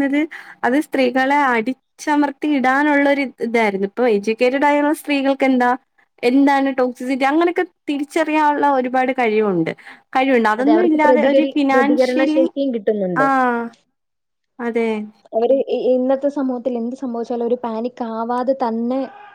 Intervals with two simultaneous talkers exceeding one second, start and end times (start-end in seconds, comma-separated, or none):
10.6-12.4